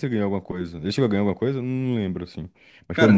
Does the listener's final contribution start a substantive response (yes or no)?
yes